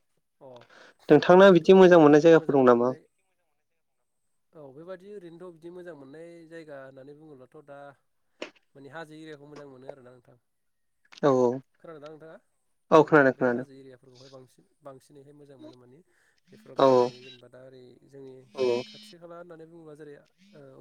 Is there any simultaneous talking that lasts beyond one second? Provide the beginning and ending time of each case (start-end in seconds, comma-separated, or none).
1.1-2.9